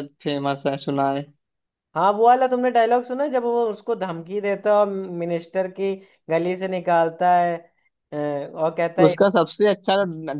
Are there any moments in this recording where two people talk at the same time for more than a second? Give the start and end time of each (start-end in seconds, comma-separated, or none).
none